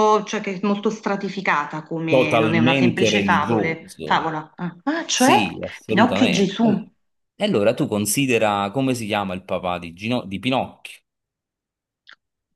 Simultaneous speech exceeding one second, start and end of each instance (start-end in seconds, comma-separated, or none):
2.1-4.3, 5.1-6.9